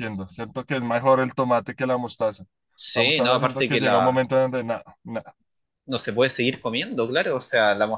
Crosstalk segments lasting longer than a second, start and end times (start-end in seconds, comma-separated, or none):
2.9-4.3